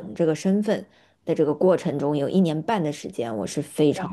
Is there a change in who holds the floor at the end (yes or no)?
no